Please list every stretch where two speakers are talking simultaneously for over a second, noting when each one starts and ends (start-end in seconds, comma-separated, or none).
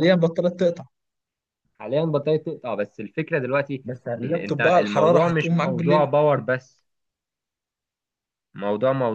4.2-6.1